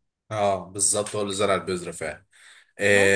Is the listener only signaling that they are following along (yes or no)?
yes